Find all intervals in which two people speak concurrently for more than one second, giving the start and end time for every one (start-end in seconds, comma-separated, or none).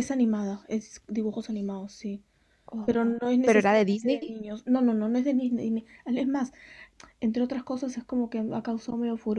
2.9-4.3